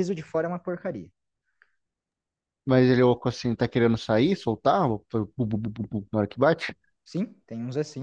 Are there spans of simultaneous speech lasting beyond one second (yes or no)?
no